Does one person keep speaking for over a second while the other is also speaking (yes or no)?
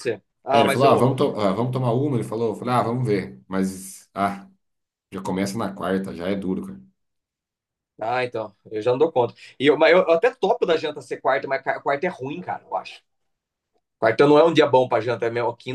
no